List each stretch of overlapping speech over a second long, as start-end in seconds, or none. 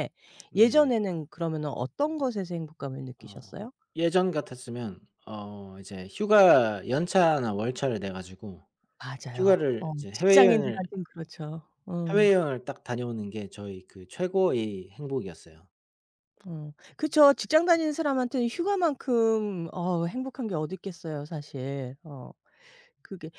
9.3-10.8